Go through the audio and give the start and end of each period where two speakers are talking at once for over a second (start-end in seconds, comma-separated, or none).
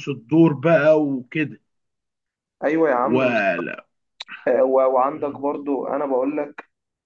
none